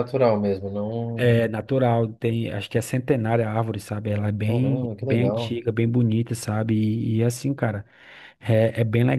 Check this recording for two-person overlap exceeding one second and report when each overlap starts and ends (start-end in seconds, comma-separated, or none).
4.4-5.6